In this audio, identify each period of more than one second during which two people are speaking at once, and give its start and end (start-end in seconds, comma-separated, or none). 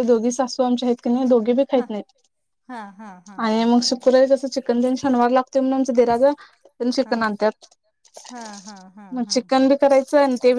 none